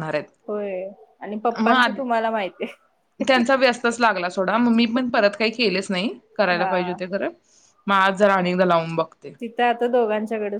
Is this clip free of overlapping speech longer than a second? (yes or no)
yes